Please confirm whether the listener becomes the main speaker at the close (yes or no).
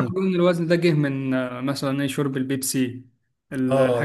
yes